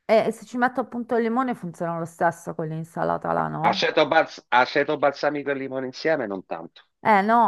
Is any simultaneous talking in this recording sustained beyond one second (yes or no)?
no